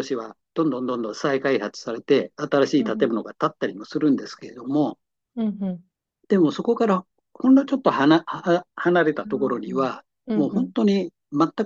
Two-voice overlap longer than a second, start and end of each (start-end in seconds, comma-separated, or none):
9.2-10.7